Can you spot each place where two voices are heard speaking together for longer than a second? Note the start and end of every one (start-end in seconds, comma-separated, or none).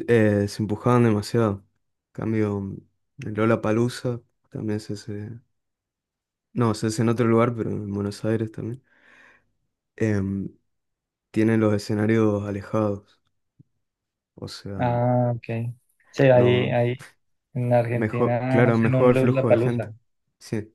17.9-19.9